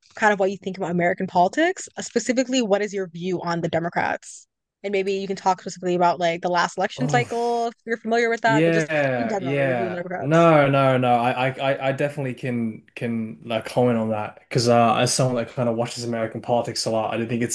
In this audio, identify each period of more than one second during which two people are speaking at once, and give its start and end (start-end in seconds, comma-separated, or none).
8.4-10.5